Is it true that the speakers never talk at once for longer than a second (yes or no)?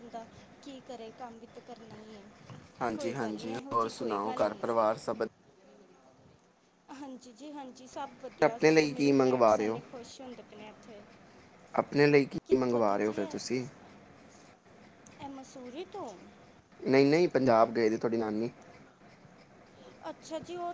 no